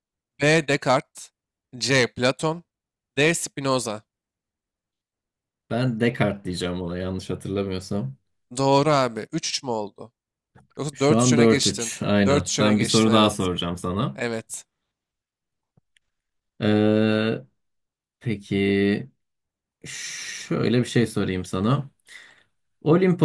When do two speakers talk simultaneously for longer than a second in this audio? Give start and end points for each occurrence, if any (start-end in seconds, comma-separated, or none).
10.9-13.5